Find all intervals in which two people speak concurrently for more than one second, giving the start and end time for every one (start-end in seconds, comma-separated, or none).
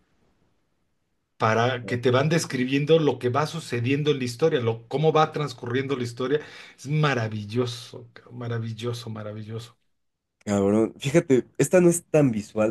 none